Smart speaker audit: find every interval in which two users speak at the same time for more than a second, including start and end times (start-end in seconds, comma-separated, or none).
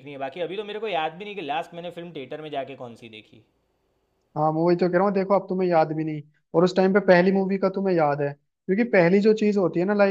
none